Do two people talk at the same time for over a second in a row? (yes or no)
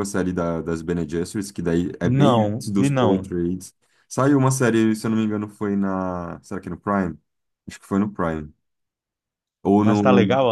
yes